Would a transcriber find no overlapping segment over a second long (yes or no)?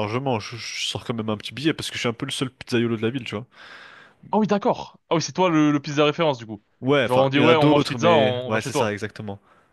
no